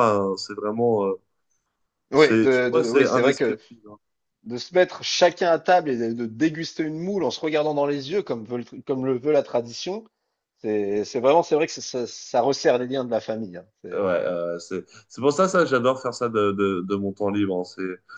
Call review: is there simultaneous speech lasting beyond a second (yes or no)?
yes